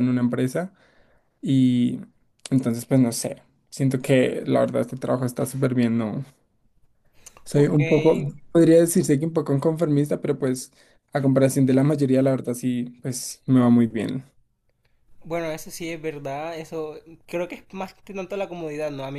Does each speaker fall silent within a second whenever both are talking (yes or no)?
yes